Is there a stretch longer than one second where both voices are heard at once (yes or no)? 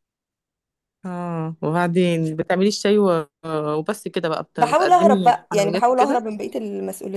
yes